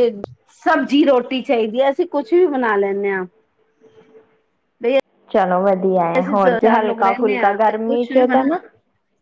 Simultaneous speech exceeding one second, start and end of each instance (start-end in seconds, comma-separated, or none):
6.2-8.5